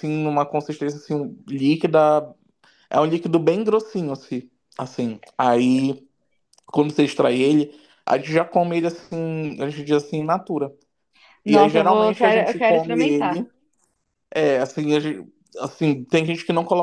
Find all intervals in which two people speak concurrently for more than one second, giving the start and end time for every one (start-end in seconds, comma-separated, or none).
11.4-13.4